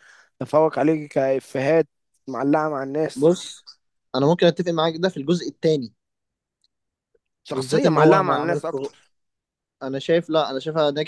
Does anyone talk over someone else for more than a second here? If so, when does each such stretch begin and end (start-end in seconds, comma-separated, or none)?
7.5-8.9